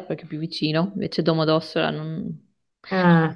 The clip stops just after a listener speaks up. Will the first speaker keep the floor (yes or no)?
yes